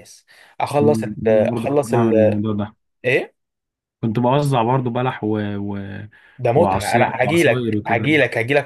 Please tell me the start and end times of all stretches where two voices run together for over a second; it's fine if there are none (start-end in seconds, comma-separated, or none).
0.8-2.4, 6.5-8.1